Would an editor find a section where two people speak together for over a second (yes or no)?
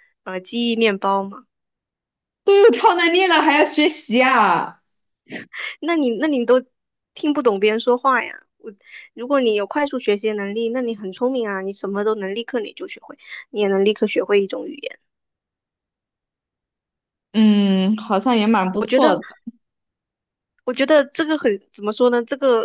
no